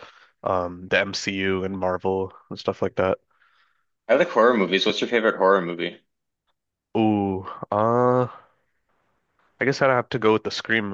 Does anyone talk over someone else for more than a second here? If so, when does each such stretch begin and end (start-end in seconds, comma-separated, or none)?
none